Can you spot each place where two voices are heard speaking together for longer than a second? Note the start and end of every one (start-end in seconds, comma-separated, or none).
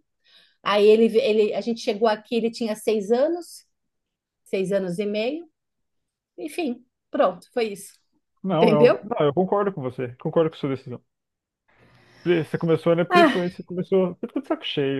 none